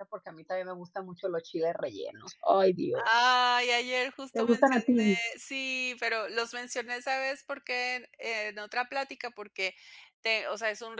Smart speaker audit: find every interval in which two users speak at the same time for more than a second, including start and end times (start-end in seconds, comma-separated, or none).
none